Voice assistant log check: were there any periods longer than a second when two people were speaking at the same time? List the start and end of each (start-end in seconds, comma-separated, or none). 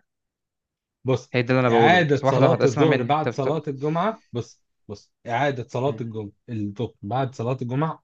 1.3-3.6